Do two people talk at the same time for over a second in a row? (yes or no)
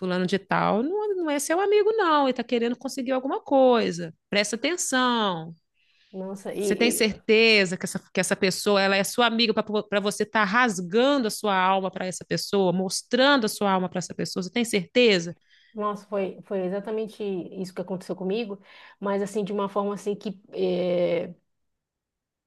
no